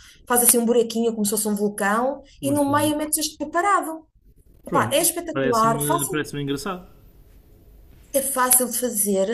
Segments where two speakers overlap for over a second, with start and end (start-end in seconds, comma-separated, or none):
4.7-6.3